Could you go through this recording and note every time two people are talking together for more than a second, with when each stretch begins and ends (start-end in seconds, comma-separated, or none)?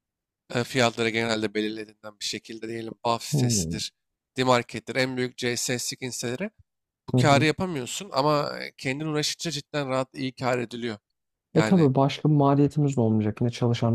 none